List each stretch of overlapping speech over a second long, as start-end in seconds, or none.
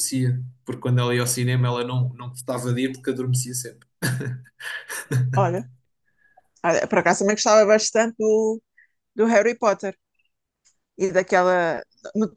none